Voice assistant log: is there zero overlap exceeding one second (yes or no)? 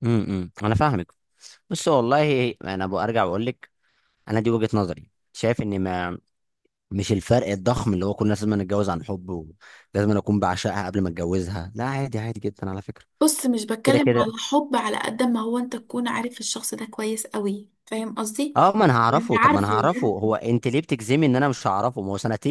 no